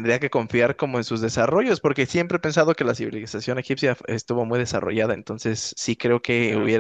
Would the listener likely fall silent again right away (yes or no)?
yes